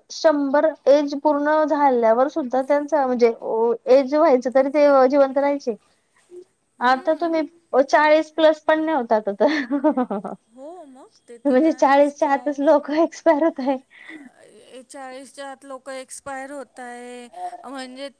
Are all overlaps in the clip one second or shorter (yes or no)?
no